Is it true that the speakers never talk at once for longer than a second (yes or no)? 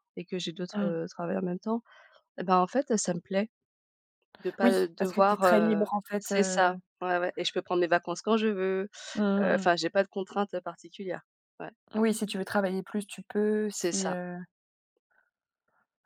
no